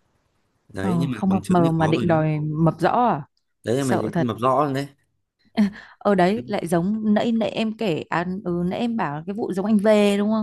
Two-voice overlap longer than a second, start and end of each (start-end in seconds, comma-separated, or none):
0.8-2.2